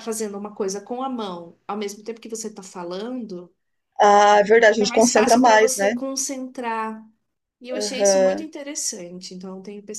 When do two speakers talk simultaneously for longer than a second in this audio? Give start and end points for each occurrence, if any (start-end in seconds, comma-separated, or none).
4.7-5.9